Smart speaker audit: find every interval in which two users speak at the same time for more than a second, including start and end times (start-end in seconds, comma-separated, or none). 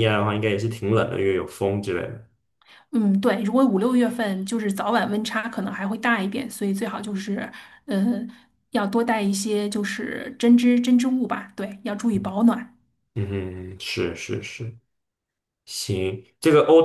none